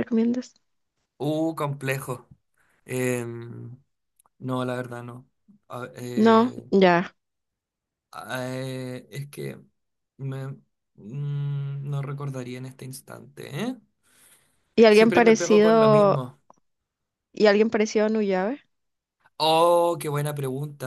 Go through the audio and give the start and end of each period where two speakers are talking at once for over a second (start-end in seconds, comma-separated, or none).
14.9-16.2